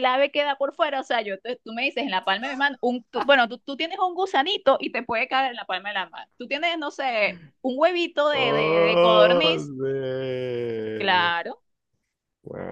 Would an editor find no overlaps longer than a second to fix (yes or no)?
no